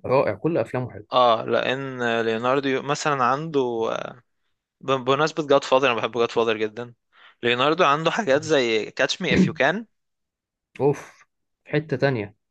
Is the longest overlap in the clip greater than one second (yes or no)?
no